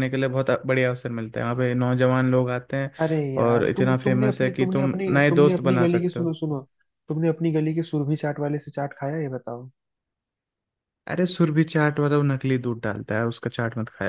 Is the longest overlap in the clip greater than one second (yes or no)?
yes